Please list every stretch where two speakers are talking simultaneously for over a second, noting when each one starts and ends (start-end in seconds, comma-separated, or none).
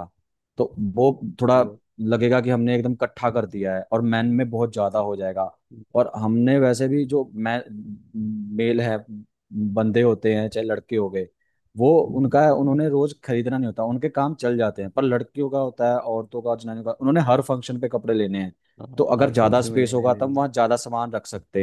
19.0-20.4